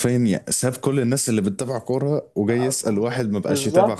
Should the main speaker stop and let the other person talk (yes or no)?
yes